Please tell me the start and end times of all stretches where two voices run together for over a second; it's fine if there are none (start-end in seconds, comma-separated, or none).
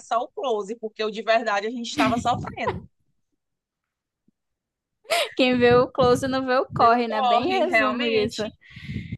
6.8-8.4